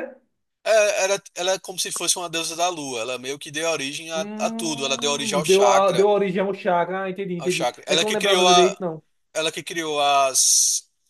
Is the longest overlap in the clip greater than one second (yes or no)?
yes